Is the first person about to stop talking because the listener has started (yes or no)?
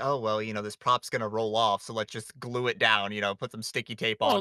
yes